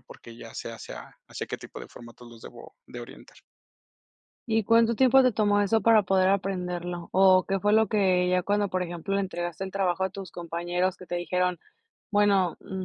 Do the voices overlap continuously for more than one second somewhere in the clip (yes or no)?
no